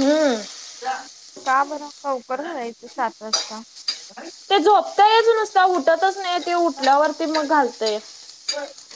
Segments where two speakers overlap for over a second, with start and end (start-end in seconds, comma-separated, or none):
none